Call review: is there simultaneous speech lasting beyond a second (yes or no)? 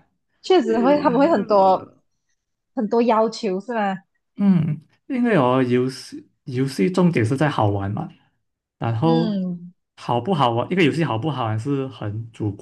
yes